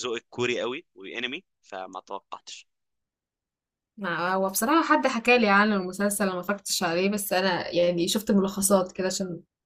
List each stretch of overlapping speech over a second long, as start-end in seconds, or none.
none